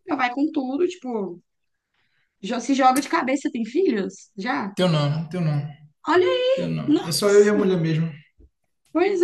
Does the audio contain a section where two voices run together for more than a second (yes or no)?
yes